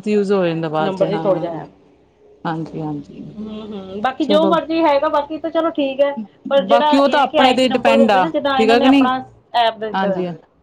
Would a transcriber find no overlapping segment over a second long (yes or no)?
no